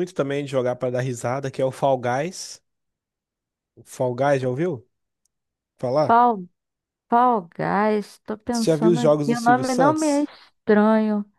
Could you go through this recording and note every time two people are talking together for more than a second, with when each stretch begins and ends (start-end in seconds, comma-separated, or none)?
8.5-10.2